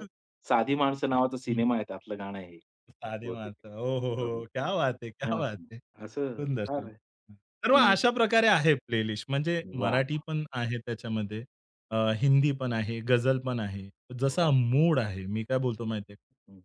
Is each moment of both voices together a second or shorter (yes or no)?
no